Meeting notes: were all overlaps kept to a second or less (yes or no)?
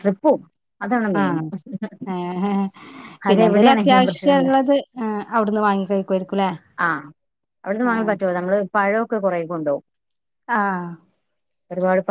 no